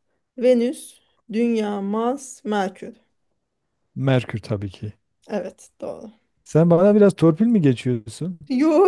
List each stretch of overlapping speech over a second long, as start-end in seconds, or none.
none